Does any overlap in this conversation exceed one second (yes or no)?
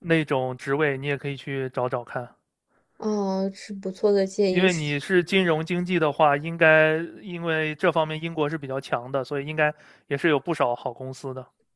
no